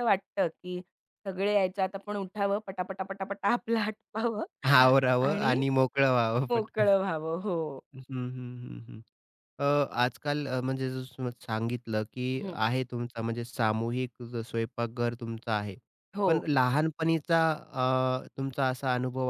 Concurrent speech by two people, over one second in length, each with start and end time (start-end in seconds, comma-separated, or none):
none